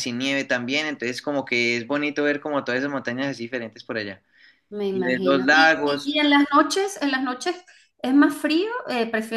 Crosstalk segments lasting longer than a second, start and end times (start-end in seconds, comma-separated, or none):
4.9-6.2